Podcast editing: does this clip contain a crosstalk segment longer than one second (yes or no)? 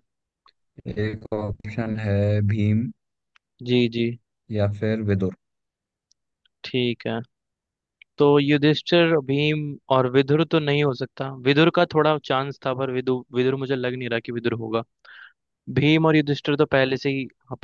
no